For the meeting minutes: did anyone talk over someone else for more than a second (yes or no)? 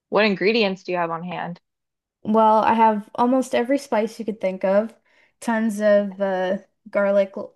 no